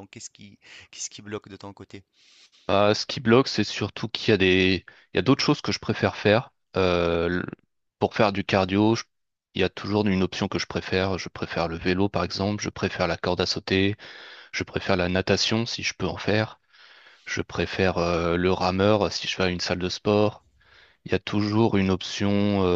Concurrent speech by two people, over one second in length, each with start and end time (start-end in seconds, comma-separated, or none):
none